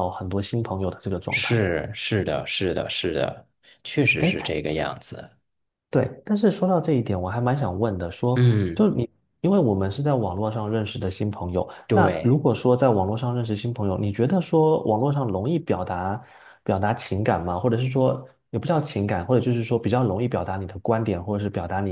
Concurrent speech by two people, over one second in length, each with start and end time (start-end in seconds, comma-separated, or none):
none